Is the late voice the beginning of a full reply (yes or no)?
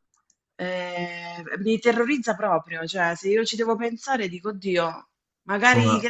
no